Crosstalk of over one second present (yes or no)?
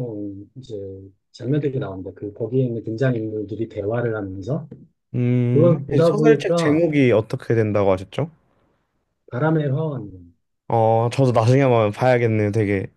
yes